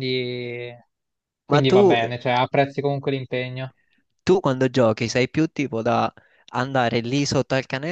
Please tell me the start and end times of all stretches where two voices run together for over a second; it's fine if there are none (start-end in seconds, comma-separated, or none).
none